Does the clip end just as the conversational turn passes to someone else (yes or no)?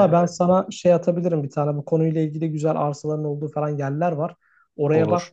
no